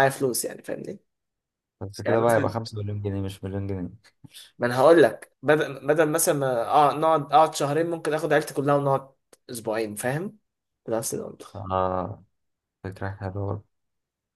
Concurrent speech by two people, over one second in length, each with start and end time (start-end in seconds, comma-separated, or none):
none